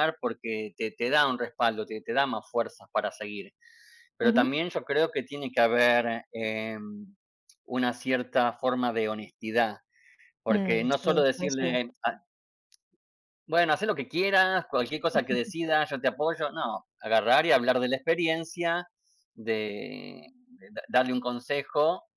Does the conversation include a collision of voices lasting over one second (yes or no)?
yes